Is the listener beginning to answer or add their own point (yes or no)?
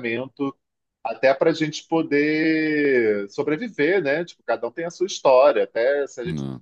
no